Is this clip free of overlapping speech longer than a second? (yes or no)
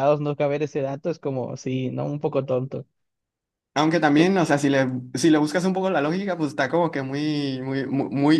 yes